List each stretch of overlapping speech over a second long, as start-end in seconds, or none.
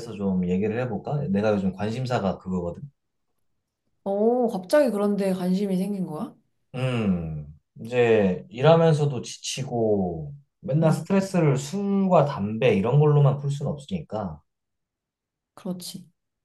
none